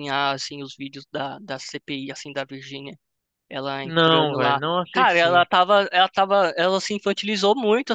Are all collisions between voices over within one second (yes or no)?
no